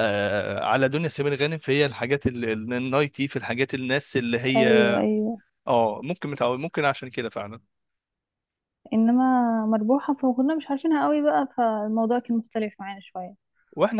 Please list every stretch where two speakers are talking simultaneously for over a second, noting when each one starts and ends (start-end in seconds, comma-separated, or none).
none